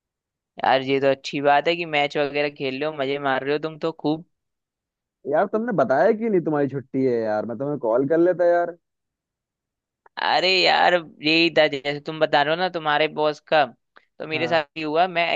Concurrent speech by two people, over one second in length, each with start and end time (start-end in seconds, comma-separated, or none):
none